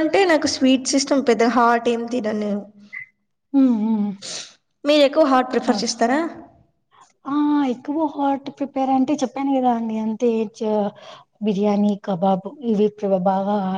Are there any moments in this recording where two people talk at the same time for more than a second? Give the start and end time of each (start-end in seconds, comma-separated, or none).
none